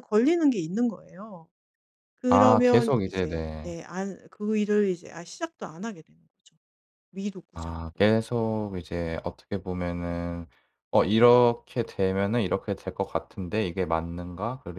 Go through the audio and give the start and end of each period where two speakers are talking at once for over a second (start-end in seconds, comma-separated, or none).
2.3-3.7